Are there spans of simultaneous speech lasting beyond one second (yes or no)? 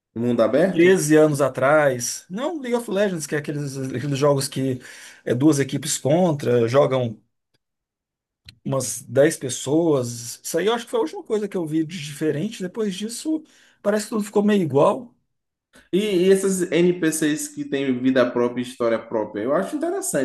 no